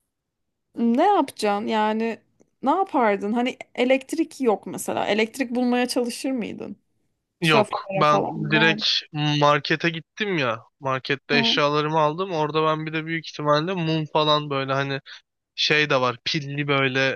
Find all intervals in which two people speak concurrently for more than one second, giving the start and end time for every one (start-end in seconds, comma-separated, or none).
7.4-8.8